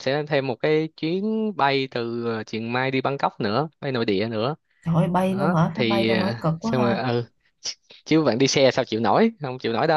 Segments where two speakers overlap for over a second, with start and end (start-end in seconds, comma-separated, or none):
5.3-7.0